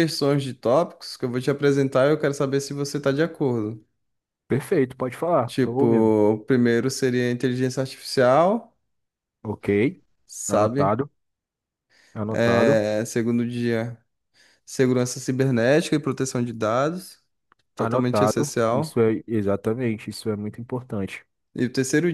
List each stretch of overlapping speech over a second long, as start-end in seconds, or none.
17.8-19.0